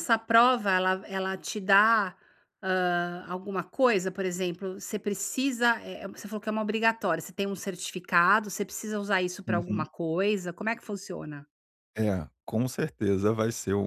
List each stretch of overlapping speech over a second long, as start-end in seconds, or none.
none